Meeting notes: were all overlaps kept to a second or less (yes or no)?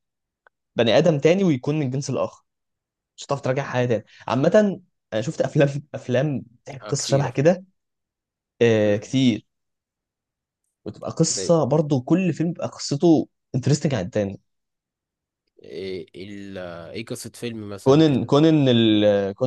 yes